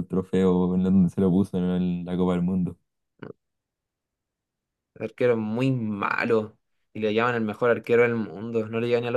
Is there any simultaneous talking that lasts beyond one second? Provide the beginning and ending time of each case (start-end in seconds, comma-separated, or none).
none